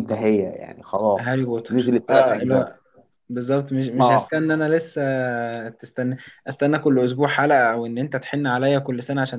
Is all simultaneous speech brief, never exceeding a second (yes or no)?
no